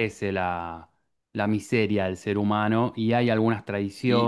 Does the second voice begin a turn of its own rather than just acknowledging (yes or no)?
yes